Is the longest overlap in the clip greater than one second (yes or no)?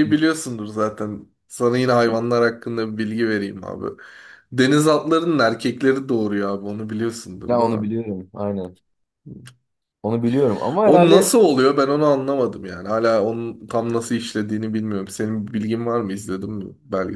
no